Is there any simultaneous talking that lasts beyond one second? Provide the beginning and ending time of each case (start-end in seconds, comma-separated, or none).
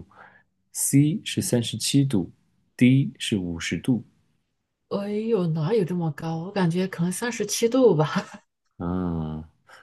none